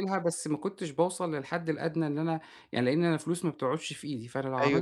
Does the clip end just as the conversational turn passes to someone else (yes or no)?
yes